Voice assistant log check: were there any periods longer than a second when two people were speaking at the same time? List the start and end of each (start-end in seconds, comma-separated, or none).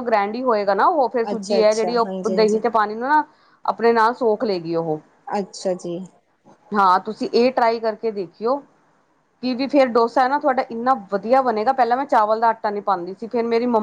1.3-2.6